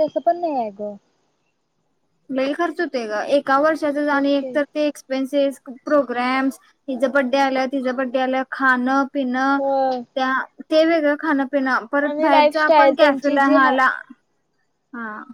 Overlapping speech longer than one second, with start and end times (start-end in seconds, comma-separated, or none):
12.1-13.8